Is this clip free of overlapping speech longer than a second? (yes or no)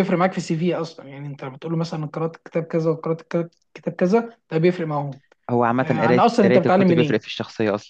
no